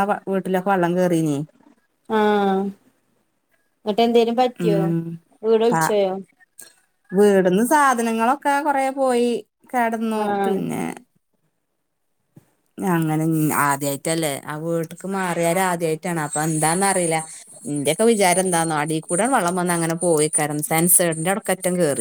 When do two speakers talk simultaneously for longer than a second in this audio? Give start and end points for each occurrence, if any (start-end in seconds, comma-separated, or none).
none